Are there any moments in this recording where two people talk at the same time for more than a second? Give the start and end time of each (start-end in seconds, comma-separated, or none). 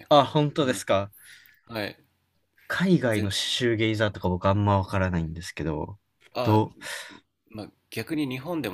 none